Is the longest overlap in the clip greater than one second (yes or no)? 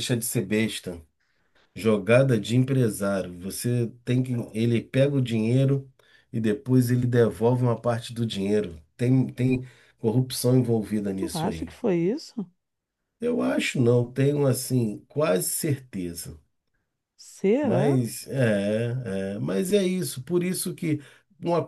no